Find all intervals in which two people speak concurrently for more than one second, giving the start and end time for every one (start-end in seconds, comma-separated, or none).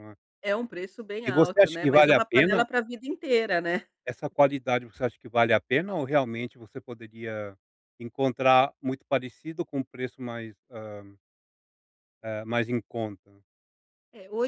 1.2-2.6